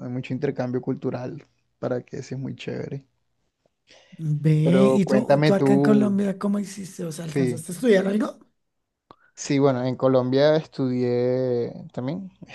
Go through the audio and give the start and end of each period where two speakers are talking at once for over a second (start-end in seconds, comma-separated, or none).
4.6-6.2